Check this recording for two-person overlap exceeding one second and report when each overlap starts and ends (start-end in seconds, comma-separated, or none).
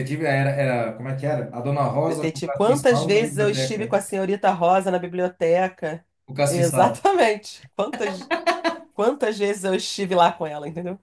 2.0-4.0